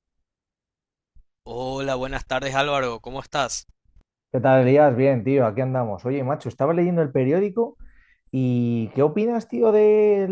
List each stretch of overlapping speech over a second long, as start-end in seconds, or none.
none